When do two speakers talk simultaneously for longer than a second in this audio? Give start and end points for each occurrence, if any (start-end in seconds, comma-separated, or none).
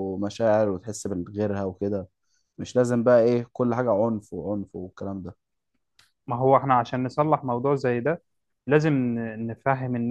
none